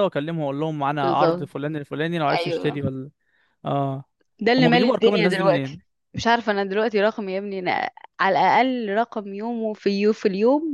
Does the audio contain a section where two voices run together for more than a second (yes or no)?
yes